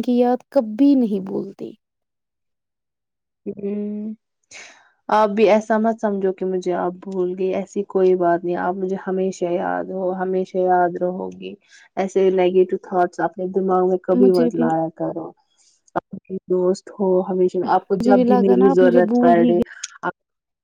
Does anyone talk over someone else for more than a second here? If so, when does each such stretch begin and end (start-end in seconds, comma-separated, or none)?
17.7-19.5